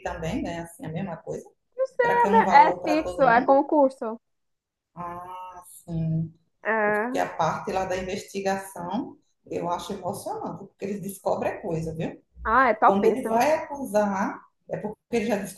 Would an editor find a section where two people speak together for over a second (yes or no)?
yes